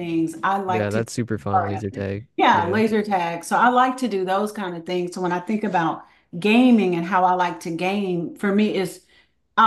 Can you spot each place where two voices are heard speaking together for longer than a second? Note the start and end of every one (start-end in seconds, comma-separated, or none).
0.7-2.8